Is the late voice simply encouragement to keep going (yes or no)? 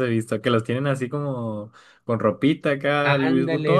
no